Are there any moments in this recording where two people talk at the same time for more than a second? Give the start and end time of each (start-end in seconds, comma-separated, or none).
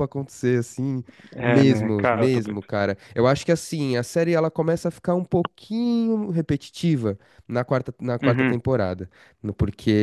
1.4-2.6